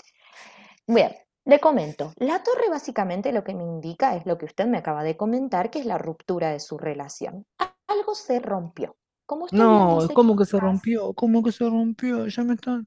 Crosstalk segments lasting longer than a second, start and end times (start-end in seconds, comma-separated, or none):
9.5-10.9